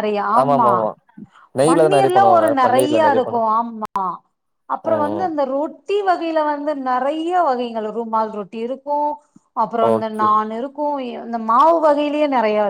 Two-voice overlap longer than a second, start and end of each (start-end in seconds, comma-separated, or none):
1.7-3.4